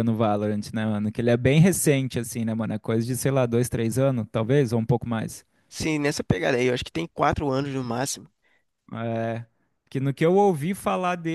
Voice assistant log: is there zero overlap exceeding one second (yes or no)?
yes